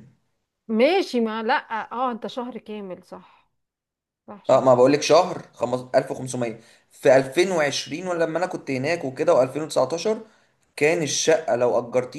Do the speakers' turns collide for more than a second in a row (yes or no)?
no